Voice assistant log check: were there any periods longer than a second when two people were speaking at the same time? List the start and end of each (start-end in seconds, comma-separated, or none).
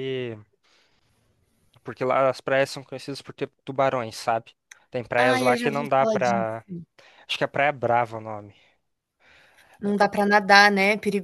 5.2-6.5